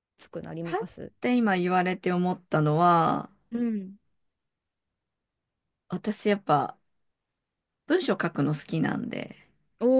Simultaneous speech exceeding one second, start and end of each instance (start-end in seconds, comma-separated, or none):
none